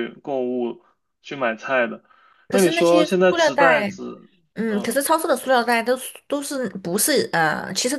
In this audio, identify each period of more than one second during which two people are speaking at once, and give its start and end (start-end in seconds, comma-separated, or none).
2.5-3.9